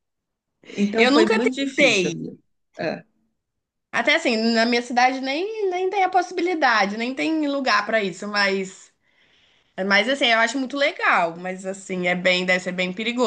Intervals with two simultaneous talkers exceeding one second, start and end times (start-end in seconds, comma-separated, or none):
1.0-2.4